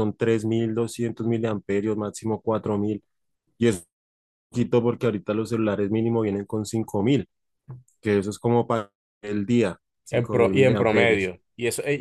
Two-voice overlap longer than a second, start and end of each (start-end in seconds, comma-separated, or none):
10.1-11.3